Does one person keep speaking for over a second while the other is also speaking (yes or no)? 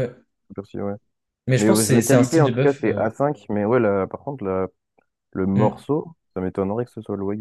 yes